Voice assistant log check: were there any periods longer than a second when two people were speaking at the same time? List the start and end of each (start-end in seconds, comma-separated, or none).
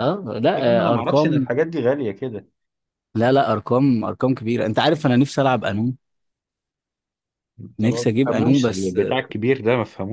7.8-9.2